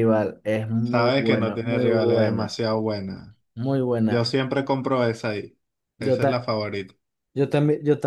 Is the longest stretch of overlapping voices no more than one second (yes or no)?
no